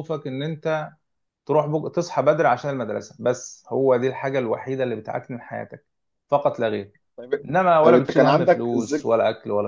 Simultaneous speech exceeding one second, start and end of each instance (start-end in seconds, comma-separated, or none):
7.5-9.1